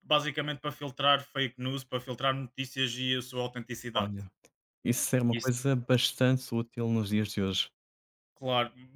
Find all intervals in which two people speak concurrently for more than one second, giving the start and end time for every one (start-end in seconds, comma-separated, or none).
none